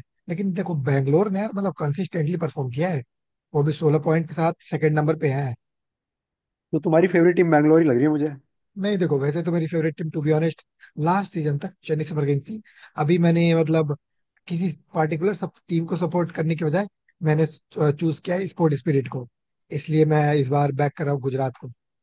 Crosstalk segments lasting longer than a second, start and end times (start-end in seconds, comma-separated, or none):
none